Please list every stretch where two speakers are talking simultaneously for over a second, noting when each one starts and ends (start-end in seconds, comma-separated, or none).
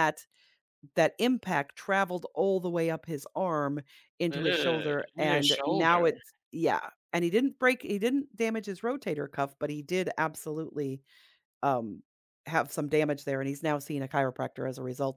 4.3-6.0